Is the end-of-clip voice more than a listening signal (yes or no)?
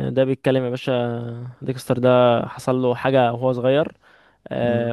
no